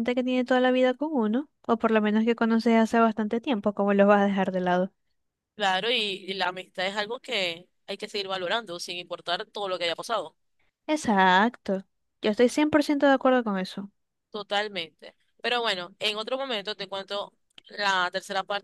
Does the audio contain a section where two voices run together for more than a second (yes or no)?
no